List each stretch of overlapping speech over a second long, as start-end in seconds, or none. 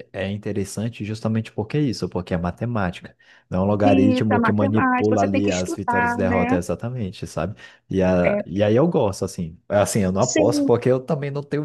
3.8-6.6